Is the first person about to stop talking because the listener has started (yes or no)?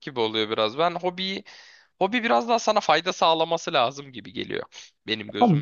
yes